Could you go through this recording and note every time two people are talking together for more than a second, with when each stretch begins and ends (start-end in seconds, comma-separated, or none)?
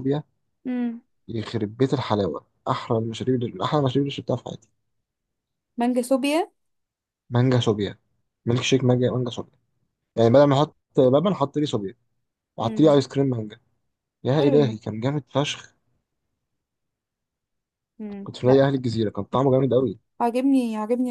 none